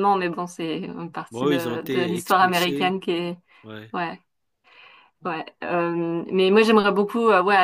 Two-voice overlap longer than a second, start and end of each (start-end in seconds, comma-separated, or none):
1.3-3.0